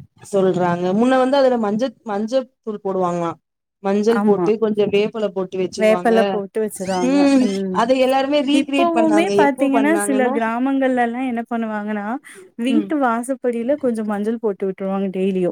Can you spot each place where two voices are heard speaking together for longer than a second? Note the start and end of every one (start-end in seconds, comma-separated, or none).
none